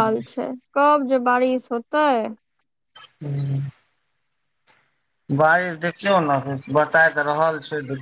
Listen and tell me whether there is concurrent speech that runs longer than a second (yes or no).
no